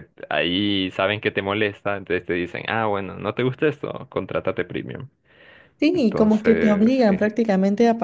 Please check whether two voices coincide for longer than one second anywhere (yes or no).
yes